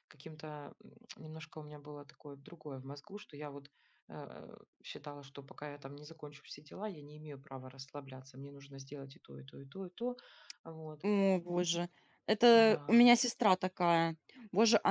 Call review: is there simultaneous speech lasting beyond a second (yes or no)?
no